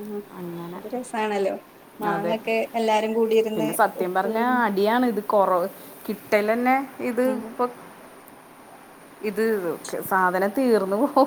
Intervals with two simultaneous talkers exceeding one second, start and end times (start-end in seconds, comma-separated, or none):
none